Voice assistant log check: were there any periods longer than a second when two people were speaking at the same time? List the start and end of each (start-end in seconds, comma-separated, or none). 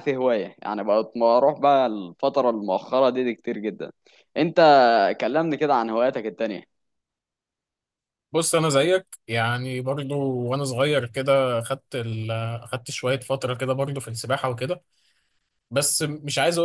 none